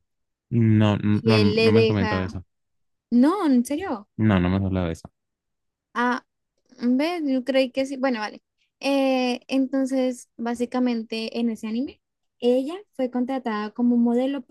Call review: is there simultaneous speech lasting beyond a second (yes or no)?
yes